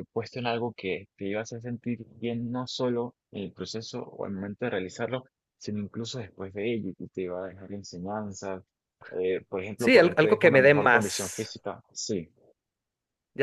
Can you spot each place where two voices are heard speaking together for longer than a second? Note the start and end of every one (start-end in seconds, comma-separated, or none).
9.8-11.5